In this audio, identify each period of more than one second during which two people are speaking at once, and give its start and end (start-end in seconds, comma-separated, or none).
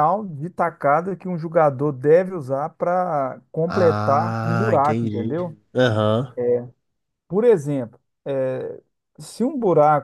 3.7-5.4